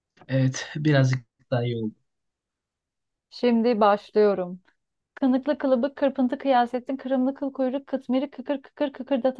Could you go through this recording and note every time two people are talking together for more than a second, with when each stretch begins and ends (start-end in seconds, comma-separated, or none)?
none